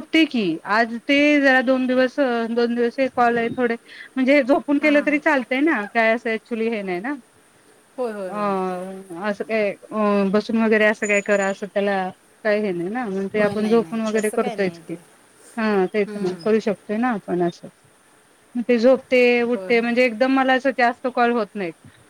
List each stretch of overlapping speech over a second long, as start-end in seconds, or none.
13.4-14.9